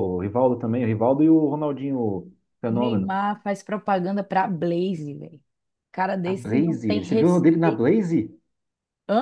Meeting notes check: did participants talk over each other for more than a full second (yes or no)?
yes